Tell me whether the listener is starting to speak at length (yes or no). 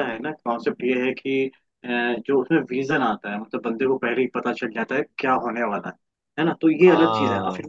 no